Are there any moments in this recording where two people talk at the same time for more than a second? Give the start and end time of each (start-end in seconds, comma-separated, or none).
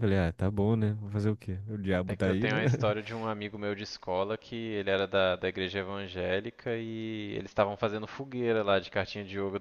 none